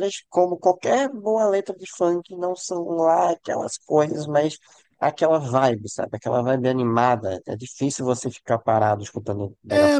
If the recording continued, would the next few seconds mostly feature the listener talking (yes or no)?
yes